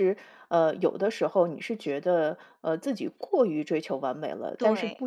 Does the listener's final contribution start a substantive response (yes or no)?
no